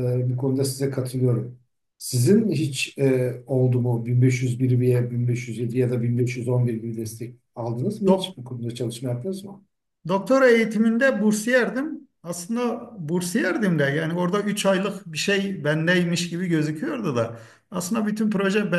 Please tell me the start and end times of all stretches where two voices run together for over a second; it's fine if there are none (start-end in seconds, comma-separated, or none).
none